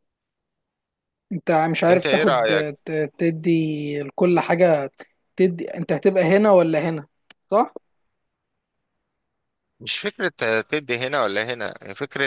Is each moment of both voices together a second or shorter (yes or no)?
yes